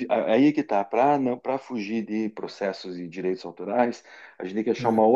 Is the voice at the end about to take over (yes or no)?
no